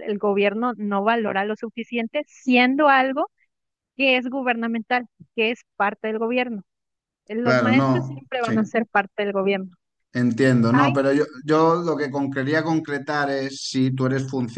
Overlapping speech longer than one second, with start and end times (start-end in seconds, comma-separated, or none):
7.4-8.7